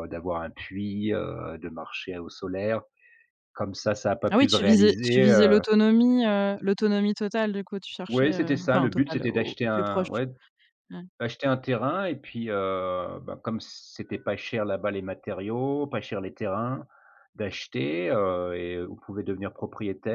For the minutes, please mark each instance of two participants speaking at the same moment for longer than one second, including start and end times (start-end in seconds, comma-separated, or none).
4.3-5.6, 8.1-10.1